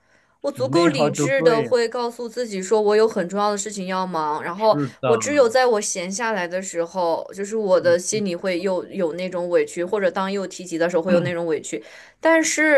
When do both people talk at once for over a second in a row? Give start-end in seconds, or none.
0.5-1.7